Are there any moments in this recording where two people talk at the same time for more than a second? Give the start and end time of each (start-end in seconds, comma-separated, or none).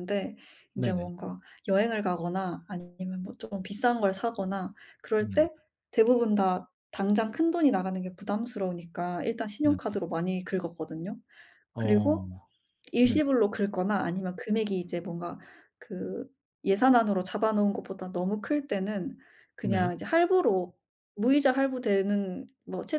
none